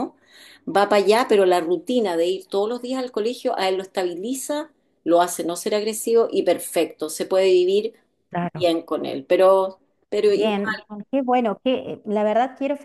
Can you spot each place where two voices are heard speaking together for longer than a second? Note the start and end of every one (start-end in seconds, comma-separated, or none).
none